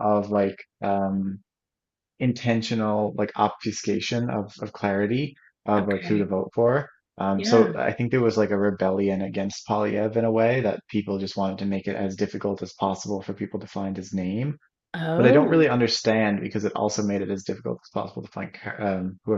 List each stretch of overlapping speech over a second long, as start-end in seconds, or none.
none